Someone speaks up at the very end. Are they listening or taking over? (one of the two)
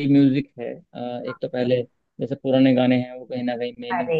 listening